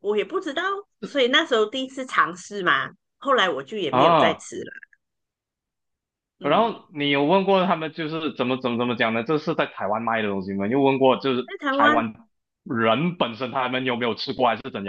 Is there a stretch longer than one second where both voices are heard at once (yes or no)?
no